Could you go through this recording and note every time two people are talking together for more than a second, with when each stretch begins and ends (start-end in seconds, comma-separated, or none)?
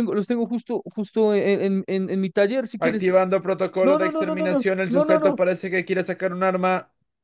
3.8-5.4